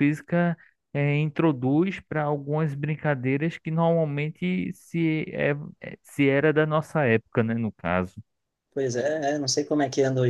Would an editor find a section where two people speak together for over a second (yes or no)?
no